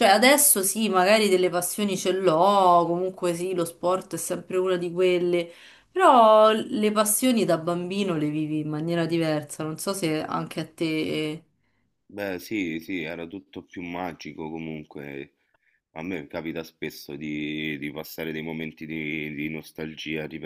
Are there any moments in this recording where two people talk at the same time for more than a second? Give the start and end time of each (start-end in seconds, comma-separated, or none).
none